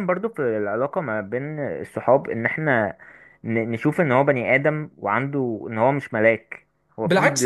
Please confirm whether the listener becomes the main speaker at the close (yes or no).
yes